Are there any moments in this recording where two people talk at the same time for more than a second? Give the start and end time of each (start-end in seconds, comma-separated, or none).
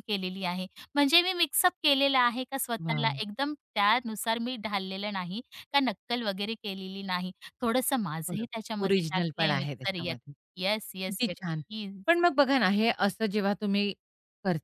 8.3-10.1